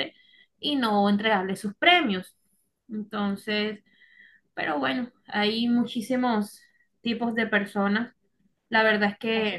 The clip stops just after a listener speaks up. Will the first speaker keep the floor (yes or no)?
yes